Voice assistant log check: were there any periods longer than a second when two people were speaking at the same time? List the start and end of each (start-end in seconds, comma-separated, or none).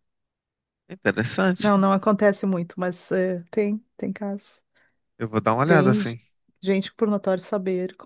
none